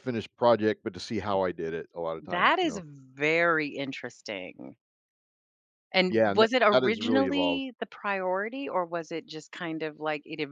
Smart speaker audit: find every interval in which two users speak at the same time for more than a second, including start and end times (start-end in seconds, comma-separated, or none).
6.1-7.6